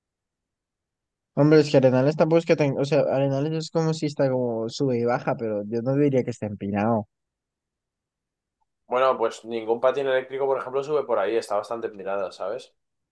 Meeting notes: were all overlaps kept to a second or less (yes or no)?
yes